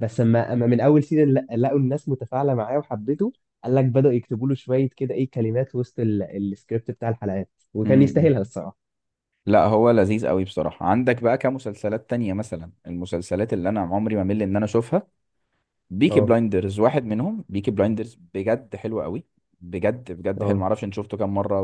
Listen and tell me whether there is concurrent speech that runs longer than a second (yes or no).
no